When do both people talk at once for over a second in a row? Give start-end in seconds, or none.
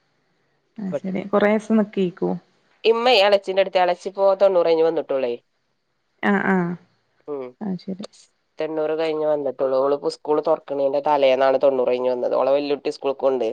none